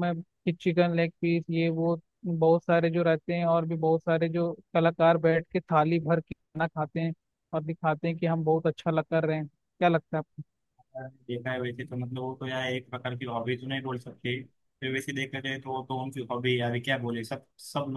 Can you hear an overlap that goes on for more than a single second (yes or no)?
no